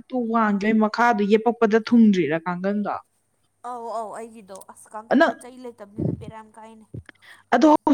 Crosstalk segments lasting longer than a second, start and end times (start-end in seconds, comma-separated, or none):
none